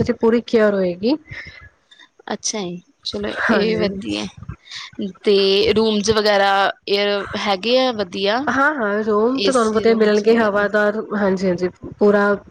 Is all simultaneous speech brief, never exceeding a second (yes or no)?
no